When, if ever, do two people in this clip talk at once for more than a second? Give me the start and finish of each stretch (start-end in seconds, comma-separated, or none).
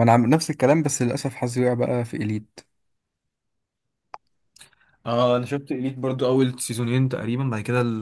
none